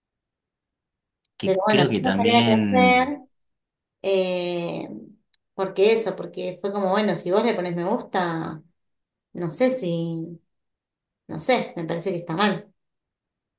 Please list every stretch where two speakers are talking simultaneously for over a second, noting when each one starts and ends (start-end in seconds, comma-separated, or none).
1.4-3.2